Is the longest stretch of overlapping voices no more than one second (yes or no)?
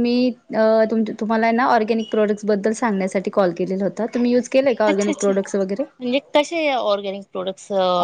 yes